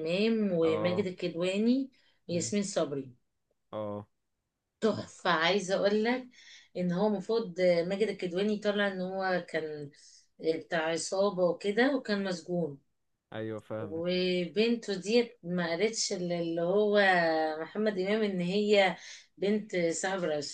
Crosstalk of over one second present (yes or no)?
no